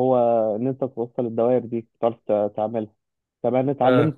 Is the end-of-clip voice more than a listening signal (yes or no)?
no